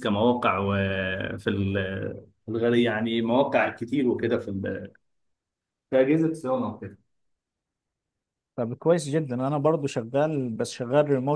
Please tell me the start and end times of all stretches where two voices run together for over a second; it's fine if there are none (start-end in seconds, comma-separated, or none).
none